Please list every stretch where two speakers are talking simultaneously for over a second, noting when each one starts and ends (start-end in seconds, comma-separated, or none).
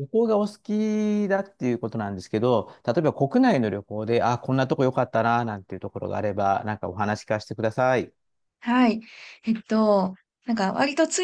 none